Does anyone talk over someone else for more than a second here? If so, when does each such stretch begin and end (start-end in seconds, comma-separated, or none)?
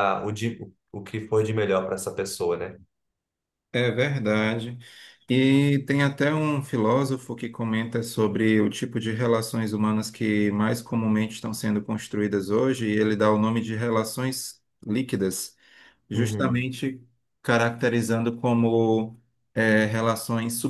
none